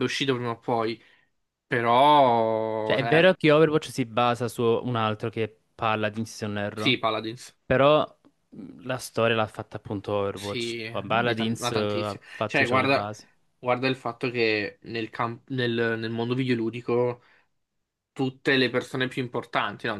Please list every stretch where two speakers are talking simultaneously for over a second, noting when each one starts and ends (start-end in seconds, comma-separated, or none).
10.3-13.1